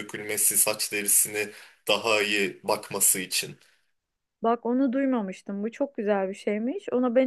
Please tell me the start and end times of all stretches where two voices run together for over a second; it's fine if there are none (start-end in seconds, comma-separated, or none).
none